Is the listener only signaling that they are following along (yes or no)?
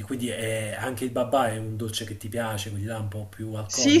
no